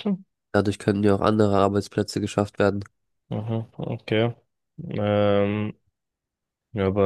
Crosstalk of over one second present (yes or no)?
no